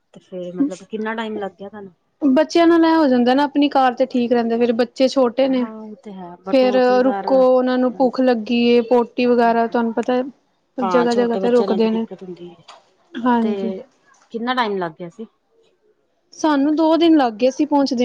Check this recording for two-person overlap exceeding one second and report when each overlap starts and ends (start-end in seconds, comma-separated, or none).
6.5-8.2